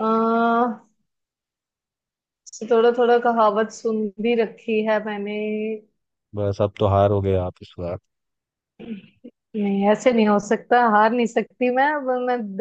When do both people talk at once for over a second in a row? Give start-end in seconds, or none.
none